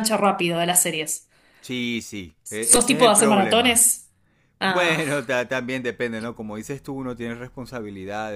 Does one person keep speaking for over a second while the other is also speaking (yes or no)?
yes